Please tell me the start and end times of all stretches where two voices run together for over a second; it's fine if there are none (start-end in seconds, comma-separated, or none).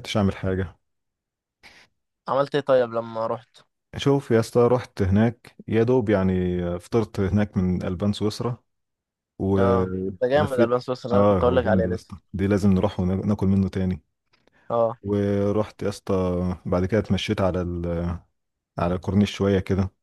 9.6-12.1